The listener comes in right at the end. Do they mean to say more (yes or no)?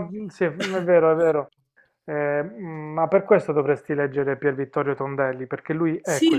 yes